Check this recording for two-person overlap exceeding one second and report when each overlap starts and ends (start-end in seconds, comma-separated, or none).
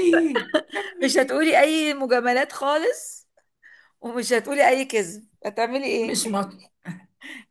none